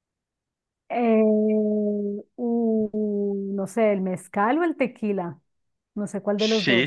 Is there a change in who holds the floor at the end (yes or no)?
yes